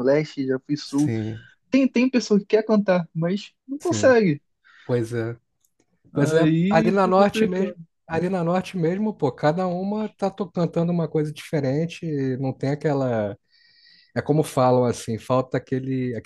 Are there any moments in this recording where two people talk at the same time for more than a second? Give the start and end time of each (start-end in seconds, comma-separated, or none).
6.1-7.8